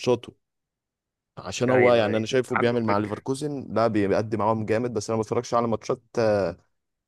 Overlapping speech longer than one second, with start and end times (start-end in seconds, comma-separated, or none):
1.7-3.2